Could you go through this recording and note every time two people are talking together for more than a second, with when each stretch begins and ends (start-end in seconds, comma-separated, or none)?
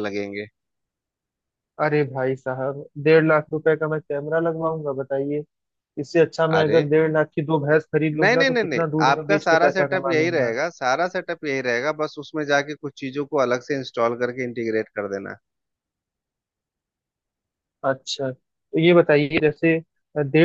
8.2-10.5